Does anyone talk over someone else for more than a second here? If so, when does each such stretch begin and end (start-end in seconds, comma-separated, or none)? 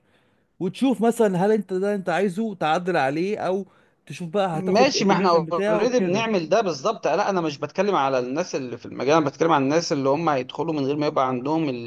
4.5-6.3